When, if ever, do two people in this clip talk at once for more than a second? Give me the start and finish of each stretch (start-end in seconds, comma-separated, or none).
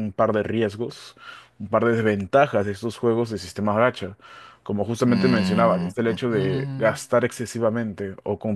5.1-7.2